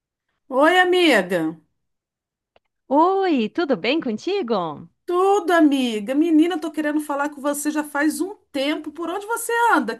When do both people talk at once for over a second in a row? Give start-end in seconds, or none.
none